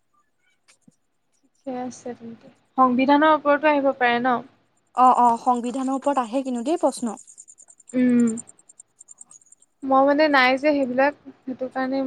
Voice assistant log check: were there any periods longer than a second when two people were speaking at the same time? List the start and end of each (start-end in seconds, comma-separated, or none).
none